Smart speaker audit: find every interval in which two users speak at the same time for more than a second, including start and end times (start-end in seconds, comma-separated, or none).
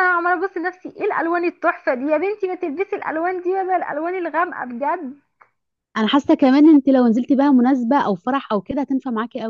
none